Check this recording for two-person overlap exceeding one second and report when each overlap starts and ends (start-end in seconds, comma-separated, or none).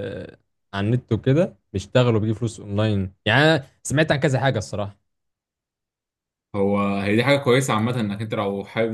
none